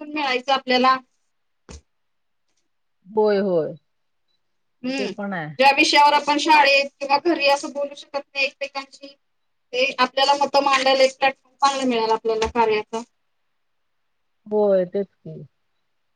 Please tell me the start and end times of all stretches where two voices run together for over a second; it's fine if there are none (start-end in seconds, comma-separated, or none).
none